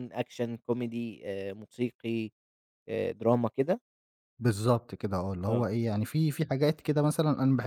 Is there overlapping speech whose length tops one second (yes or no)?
no